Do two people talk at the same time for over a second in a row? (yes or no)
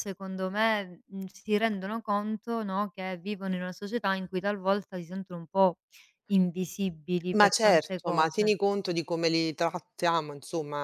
yes